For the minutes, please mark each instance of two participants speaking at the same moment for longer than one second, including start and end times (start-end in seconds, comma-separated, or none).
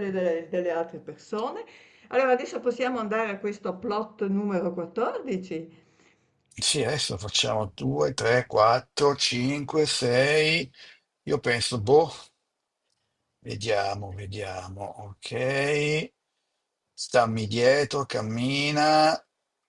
none